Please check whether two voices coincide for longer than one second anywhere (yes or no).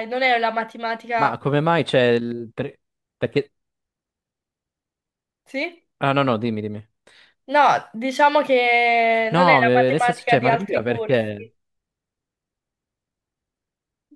yes